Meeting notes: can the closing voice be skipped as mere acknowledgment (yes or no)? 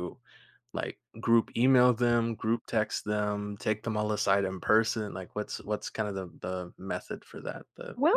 no